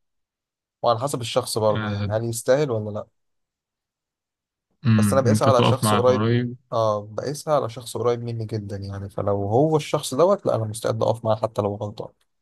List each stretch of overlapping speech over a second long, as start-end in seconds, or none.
5.0-6.3